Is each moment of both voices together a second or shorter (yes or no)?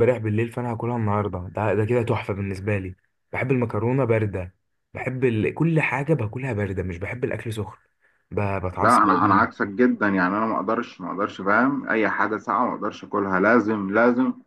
yes